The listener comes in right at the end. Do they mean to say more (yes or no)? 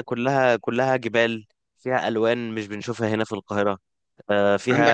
no